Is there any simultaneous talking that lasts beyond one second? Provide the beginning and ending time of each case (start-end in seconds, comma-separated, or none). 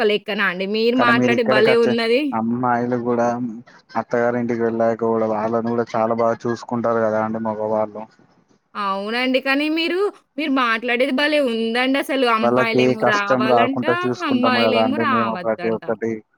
14.3-15.8